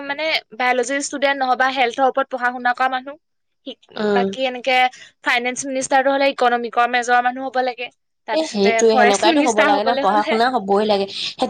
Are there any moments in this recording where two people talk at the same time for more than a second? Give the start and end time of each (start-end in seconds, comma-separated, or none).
8.4-10.3